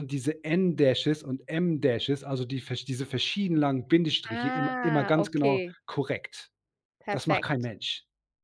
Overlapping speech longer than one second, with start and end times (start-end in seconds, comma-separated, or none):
4.3-5.7